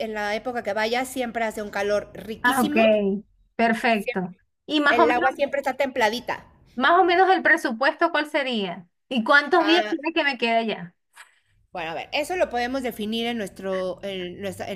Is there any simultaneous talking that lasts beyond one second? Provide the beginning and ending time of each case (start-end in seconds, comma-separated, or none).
none